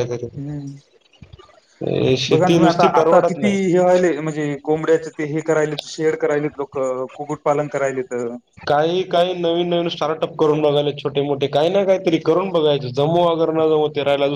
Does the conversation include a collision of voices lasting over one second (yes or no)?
no